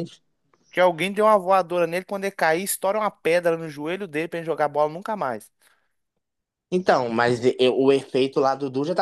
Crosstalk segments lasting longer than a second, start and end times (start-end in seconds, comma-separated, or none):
none